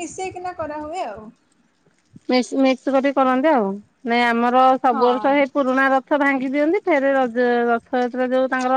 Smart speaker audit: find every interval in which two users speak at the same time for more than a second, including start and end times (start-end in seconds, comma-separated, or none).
none